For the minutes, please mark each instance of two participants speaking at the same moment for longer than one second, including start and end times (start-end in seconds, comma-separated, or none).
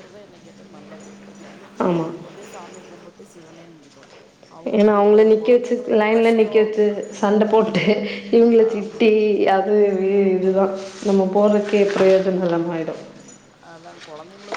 4.8-6.7